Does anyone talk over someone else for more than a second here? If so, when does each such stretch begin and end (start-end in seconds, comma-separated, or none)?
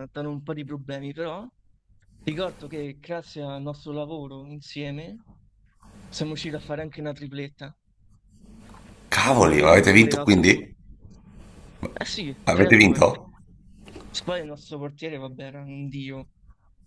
9.4-10.6